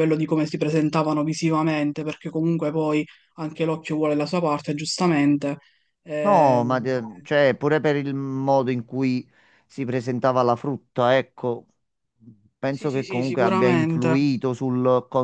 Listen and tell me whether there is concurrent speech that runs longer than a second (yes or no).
yes